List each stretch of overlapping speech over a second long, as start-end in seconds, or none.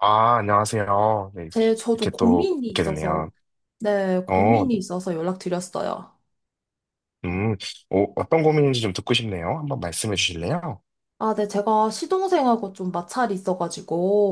1.9-3.2